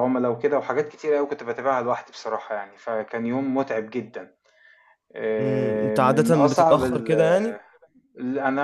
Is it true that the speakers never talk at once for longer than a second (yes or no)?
no